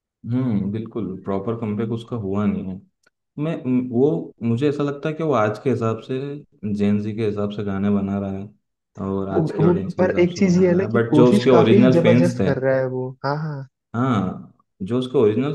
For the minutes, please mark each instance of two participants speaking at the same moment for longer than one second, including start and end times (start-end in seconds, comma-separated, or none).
9.3-12.5